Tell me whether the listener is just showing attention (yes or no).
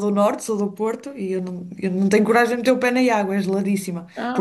yes